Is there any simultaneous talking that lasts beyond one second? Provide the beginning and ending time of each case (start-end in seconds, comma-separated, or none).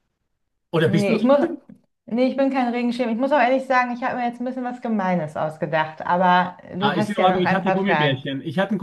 6.8-8.2